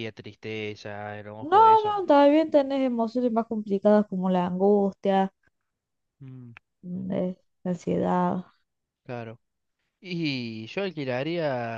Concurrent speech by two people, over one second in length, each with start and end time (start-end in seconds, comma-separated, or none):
none